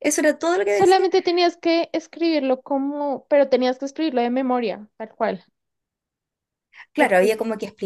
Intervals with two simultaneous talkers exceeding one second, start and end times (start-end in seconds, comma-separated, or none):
none